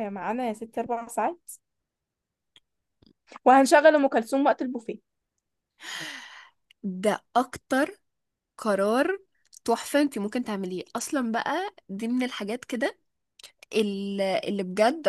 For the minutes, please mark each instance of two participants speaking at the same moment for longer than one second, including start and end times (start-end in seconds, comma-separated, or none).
none